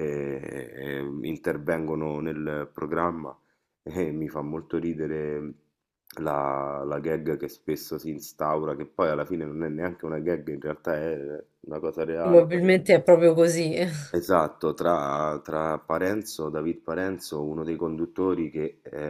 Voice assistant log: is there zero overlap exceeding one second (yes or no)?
yes